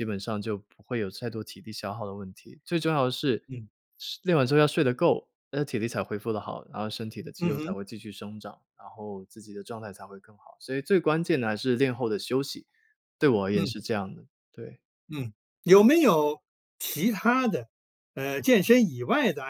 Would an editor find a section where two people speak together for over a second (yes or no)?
no